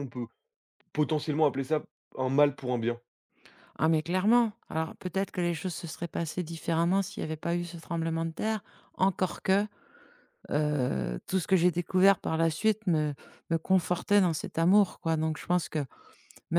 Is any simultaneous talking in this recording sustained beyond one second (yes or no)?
no